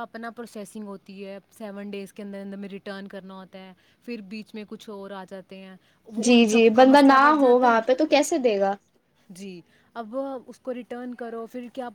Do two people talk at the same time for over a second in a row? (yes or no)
yes